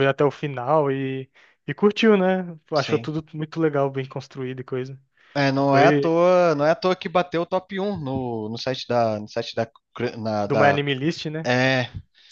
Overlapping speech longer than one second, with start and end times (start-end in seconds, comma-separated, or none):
none